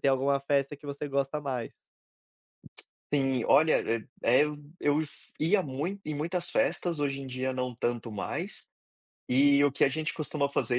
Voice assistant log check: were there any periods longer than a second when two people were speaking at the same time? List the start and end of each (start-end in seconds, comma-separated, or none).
none